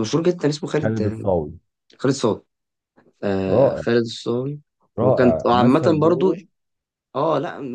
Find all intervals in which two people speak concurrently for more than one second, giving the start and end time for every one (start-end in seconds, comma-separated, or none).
5.0-6.3